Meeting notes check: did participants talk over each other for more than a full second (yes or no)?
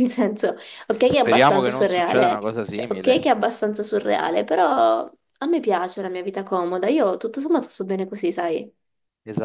yes